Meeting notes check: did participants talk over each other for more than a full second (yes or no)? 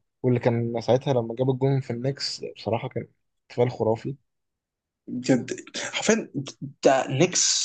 no